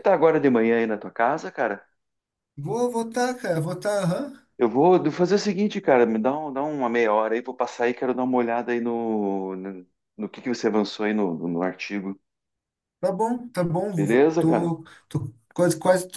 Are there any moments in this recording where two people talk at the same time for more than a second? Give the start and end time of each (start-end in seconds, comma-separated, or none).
none